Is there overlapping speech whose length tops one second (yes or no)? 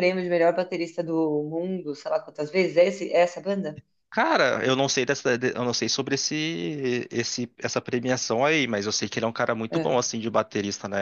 no